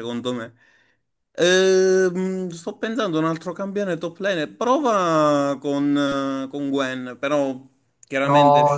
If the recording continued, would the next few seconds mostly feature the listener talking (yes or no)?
yes